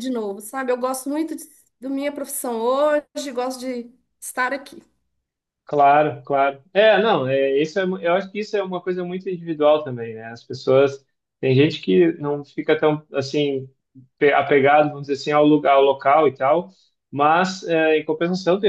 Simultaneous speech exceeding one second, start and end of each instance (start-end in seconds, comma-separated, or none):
none